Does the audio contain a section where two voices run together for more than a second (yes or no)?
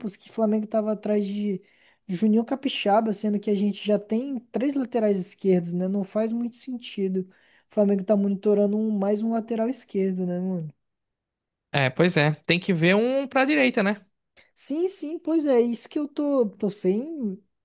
no